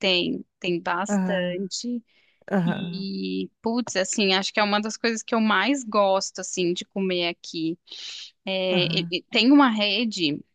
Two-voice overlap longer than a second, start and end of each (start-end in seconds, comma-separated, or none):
none